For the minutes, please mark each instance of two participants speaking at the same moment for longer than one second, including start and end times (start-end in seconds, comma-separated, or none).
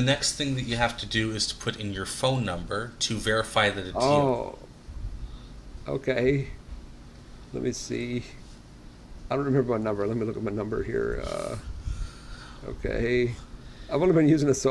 none